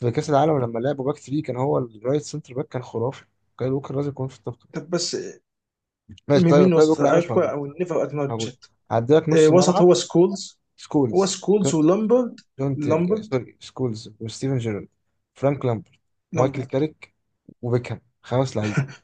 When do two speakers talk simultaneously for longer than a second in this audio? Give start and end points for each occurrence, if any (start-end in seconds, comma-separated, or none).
6.3-7.5